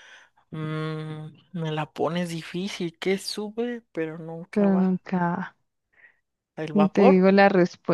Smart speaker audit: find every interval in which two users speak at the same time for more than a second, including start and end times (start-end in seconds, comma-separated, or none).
none